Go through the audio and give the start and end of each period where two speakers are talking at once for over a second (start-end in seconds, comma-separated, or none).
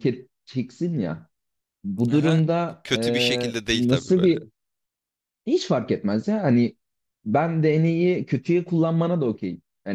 2.1-4.3